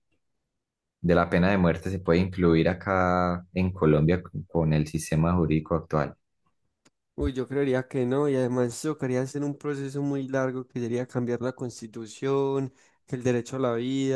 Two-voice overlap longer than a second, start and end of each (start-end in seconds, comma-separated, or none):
none